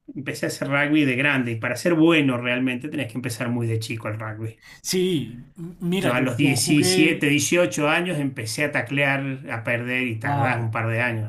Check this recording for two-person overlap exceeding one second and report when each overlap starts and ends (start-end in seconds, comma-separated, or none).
6.0-7.2